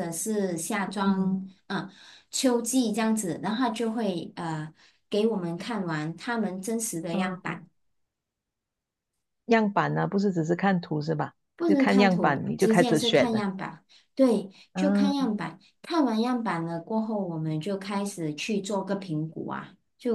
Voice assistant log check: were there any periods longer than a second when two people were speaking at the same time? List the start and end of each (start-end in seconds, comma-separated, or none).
11.6-13.4